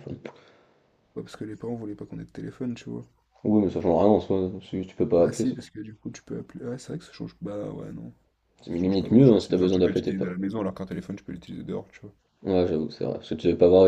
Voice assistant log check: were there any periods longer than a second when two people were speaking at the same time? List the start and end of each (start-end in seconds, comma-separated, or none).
8.7-10.4